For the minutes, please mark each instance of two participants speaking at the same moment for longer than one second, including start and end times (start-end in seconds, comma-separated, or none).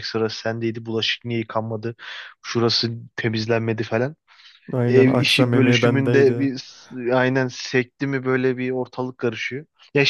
4.8-6.5